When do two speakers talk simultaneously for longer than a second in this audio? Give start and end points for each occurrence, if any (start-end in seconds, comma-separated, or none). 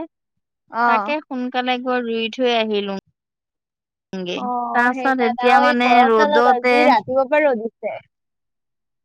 5.0-6.7